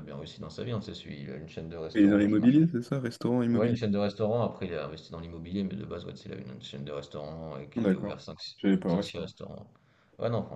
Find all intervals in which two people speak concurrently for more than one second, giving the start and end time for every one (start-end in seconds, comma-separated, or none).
none